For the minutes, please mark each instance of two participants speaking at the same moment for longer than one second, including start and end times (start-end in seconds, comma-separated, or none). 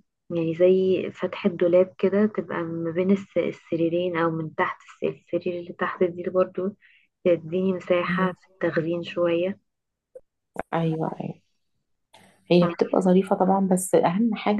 none